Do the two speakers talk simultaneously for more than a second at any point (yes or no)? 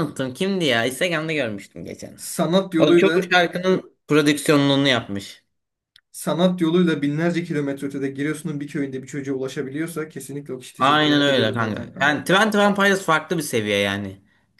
yes